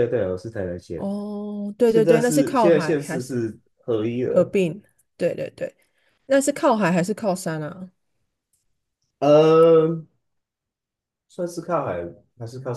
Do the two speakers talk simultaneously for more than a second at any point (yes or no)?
yes